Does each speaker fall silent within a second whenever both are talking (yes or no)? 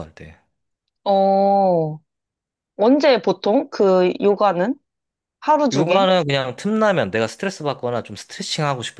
yes